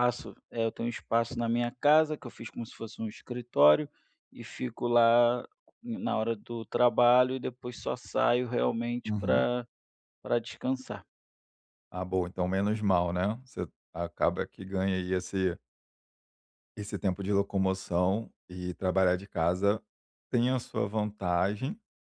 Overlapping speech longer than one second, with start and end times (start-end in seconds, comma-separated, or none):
none